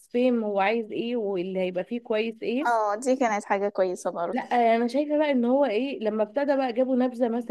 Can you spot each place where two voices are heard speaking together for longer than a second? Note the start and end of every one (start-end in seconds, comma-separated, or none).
none